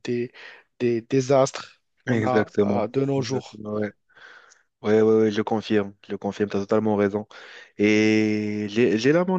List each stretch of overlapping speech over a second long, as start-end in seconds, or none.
2.1-3.6